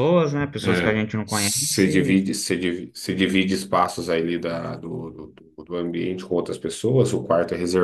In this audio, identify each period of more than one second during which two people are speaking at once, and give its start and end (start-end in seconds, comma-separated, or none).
0.6-2.3